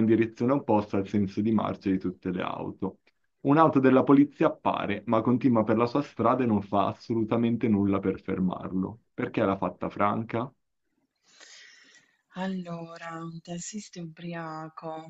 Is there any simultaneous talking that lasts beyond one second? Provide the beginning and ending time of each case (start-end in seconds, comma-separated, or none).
none